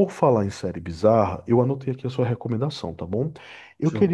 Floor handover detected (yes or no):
no